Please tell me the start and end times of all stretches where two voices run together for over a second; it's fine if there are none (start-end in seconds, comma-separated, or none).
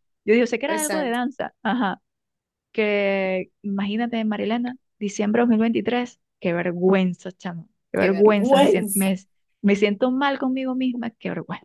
8.0-9.2